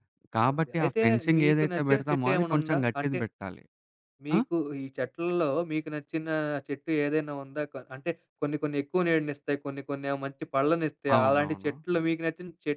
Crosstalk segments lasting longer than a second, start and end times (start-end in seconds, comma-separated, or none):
0.5-3.2